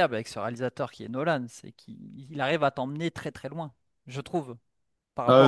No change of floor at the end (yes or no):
no